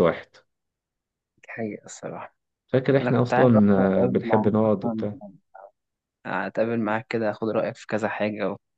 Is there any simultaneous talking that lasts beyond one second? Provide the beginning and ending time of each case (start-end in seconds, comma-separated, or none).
3.0-5.0